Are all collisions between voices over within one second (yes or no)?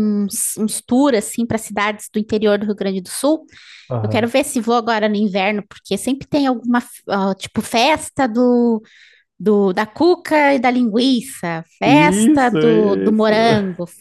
no